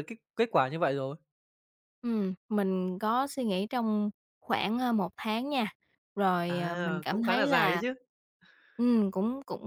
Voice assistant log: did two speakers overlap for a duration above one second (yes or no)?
yes